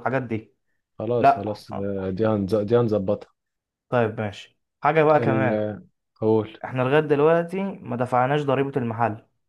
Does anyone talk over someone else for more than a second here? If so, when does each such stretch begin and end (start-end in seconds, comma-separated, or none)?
none